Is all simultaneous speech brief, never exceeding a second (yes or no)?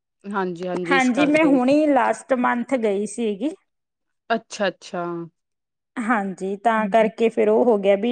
yes